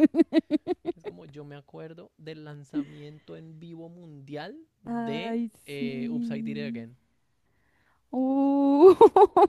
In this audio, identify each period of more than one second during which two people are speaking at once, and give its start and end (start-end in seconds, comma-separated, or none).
4.8-6.9